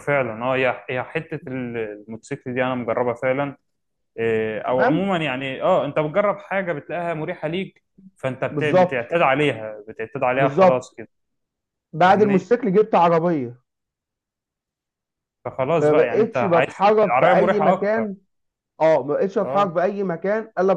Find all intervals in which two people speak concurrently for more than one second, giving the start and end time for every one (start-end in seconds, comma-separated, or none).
15.8-18.1